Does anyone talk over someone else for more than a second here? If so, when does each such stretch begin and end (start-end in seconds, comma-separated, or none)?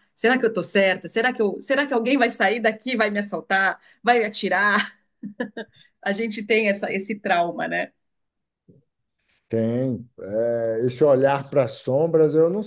none